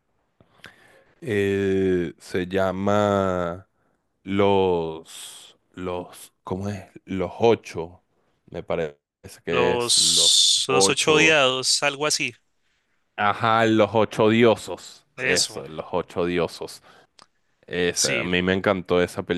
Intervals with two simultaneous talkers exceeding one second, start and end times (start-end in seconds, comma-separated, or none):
9.5-11.4